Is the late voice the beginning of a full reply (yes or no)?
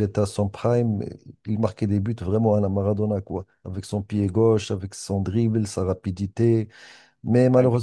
no